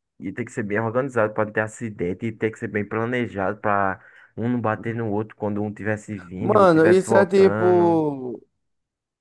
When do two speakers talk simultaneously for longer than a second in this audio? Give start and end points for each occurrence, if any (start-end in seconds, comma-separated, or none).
6.4-8.0